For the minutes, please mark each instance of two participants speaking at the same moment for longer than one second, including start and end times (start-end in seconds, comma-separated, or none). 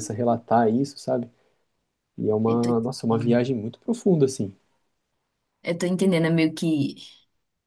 none